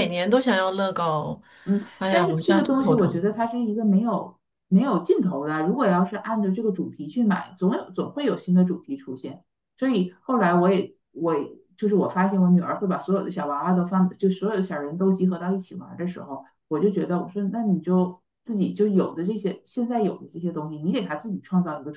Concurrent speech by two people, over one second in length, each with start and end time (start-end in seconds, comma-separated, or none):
2.0-3.2